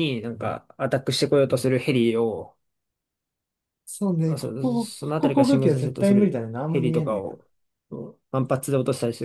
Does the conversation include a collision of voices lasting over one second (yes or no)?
yes